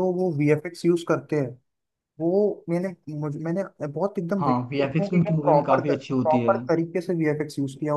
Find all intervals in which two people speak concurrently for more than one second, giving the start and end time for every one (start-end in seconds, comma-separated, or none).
4.4-6.6